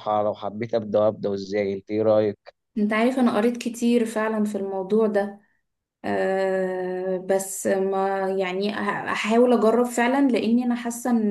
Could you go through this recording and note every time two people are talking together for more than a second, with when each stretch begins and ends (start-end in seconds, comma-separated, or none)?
none